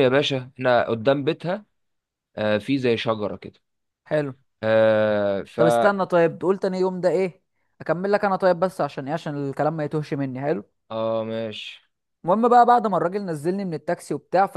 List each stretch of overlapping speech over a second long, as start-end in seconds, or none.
none